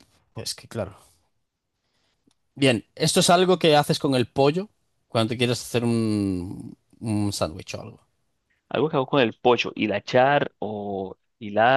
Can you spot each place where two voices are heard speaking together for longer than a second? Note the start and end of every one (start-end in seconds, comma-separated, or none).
none